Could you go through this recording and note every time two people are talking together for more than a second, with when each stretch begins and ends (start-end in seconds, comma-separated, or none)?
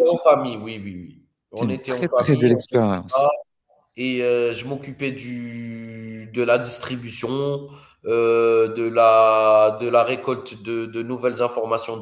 1.6-3.3